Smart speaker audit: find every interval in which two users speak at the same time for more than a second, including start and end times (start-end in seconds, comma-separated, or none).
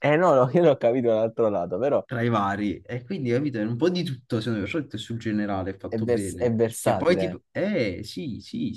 5.9-7.4